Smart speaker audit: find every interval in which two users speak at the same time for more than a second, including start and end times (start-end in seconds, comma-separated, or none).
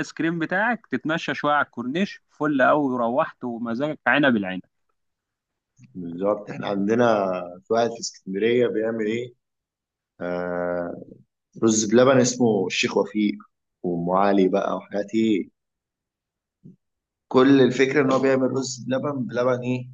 none